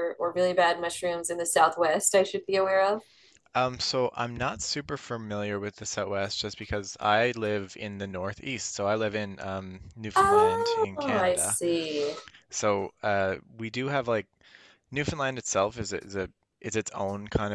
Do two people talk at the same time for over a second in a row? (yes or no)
yes